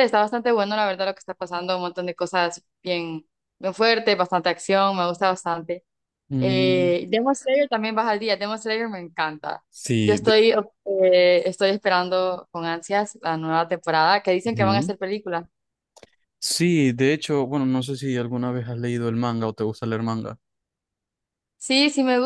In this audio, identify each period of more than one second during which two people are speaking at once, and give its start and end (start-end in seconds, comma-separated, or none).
none